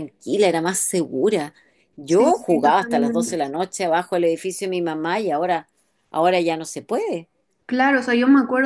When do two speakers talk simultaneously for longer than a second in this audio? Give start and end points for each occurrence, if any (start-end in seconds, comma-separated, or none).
2.1-3.4